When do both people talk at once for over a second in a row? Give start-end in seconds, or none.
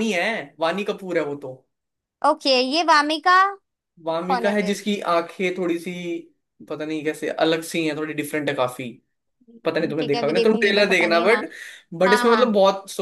9.7-11.4